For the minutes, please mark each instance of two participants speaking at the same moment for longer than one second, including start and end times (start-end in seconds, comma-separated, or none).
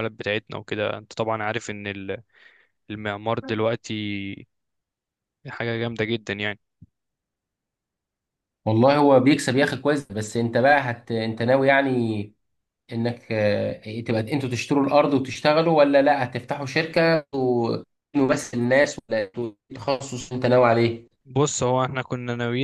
none